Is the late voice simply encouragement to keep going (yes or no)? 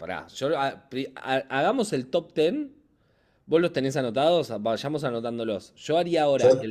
yes